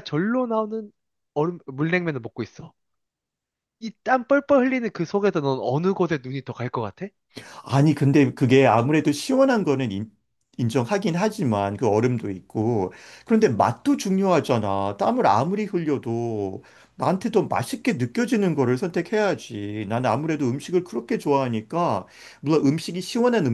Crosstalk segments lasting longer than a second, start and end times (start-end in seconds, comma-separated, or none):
none